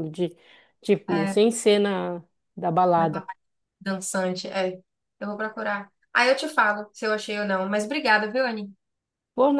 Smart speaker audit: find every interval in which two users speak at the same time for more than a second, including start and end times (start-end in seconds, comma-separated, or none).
none